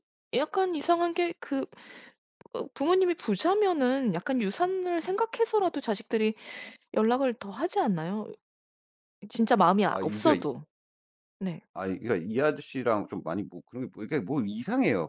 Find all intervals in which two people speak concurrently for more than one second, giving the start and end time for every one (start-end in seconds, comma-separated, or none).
none